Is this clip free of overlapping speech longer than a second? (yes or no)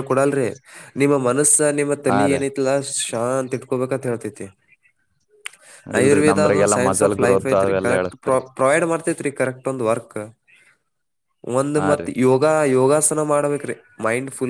no